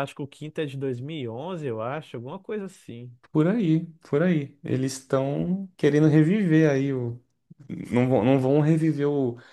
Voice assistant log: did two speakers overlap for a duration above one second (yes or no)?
no